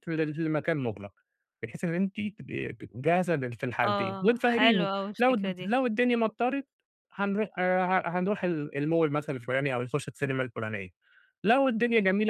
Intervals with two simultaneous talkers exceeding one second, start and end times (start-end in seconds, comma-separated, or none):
3.9-5.7